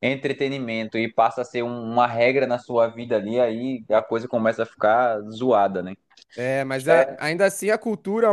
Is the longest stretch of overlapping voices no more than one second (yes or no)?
yes